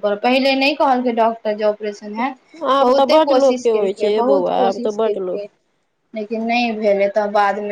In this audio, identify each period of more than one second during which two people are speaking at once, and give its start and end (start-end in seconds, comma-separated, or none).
2.8-5.3